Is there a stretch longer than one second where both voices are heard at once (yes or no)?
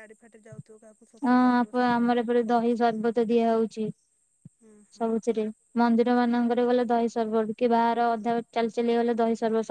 yes